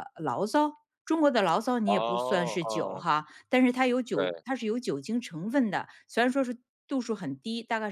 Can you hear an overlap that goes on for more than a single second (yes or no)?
yes